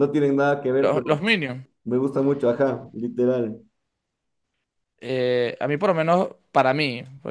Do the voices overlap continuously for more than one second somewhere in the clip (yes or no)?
no